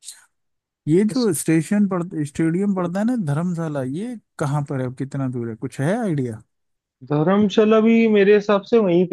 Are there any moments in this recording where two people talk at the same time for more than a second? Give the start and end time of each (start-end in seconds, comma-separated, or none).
none